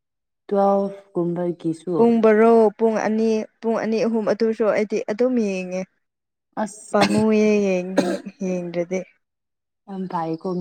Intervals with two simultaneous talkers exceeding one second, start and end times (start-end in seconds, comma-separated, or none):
none